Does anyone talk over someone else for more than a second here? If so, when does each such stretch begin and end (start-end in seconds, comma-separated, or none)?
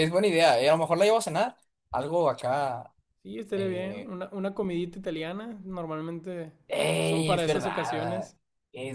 7.0-8.3